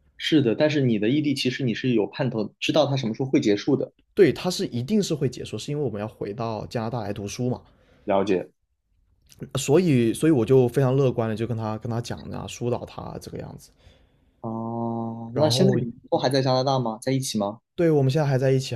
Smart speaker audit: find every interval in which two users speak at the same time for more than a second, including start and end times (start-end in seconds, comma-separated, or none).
none